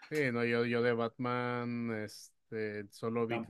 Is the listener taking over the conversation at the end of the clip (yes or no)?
no